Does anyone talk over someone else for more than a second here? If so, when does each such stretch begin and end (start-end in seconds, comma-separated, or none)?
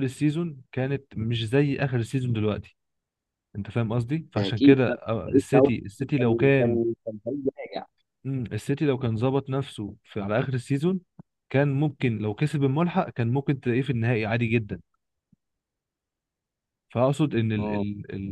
4.4-6.8